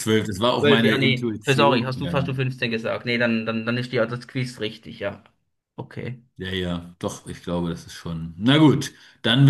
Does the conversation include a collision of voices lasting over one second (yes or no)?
yes